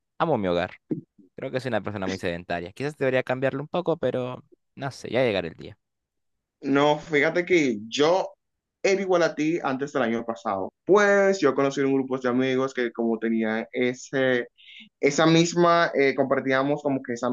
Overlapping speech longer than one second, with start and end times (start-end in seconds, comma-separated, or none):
none